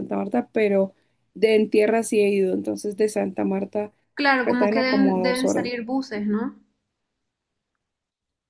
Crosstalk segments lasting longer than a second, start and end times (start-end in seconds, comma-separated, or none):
4.4-5.7